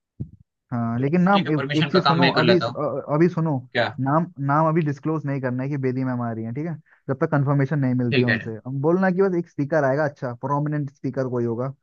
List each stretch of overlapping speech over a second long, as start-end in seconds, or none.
1.0-2.8